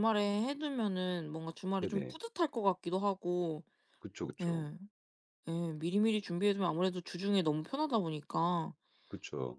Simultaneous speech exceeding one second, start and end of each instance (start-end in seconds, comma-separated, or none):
none